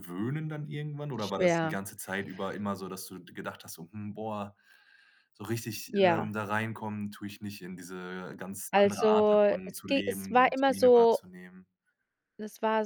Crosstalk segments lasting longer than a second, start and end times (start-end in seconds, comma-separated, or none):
8.7-11.2